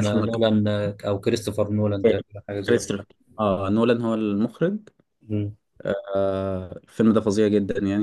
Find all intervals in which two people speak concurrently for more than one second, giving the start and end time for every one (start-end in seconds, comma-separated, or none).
none